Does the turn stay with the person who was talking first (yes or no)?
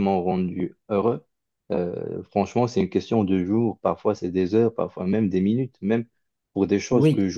yes